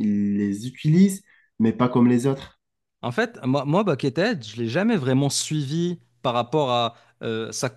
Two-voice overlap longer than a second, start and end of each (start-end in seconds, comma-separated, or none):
none